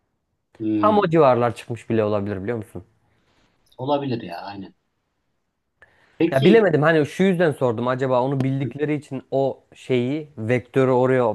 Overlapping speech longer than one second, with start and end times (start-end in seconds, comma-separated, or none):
none